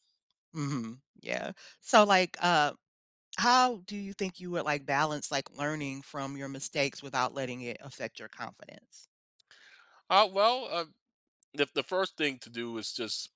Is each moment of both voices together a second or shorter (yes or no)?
yes